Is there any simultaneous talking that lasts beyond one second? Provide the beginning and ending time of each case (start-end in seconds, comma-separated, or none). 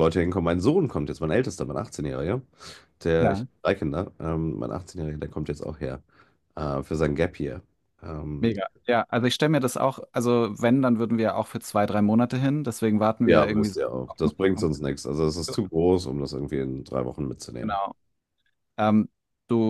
13.2-14.7